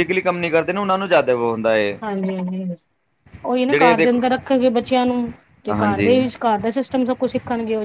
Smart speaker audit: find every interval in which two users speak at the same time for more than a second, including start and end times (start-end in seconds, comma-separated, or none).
none